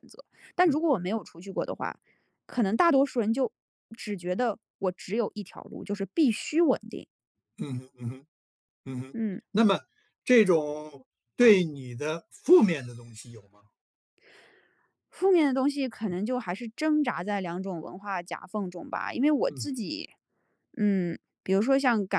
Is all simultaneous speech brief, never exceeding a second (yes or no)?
yes